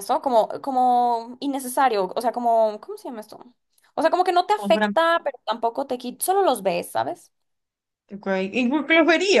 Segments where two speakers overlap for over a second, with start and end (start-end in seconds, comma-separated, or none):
none